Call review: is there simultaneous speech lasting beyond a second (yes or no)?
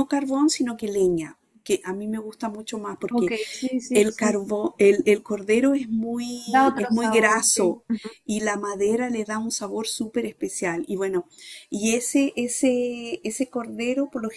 yes